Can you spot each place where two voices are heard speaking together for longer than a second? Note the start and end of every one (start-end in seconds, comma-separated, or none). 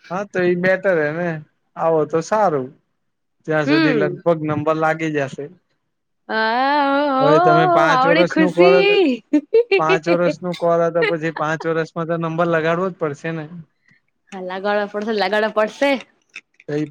7.2-8.9